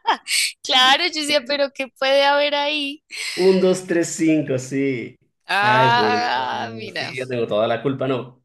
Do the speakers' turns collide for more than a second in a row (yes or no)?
yes